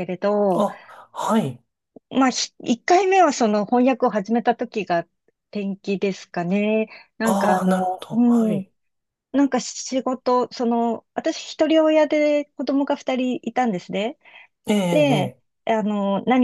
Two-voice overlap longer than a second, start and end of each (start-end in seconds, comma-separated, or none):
7.2-8.7